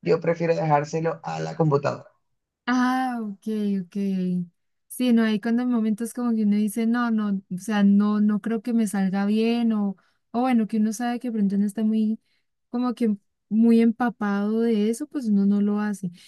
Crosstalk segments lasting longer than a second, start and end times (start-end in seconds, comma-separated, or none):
none